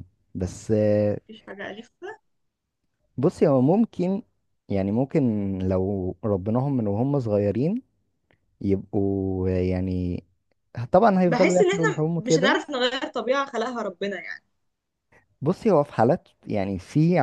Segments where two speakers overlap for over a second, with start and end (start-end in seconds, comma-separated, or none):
11.3-12.6